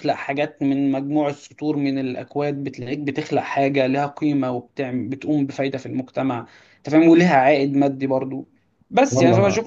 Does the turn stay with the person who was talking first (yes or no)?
yes